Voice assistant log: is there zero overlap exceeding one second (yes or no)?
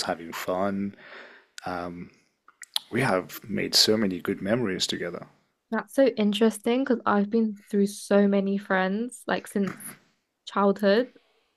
yes